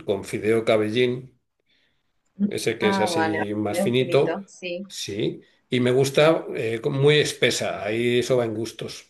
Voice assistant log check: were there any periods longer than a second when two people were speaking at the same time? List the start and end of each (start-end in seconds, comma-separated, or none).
2.8-4.4